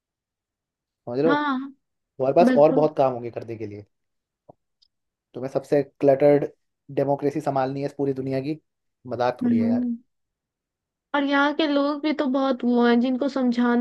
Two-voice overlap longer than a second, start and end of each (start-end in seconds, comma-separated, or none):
none